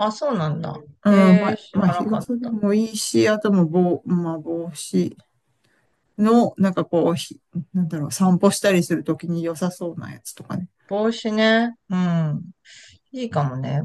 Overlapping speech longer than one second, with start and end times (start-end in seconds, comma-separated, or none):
1.0-2.6